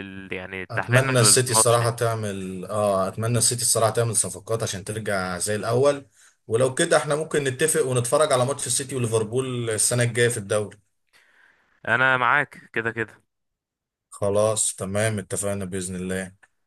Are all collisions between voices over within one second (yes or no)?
no